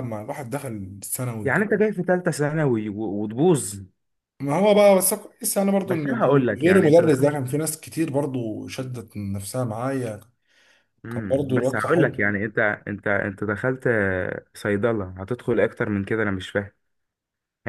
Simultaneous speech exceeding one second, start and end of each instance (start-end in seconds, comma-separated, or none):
5.8-7.4, 11.1-12.4